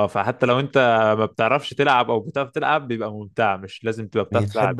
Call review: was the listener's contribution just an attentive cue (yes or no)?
yes